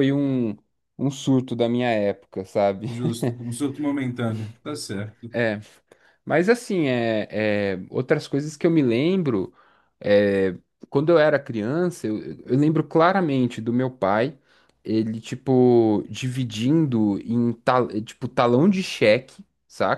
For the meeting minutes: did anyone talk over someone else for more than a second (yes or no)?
no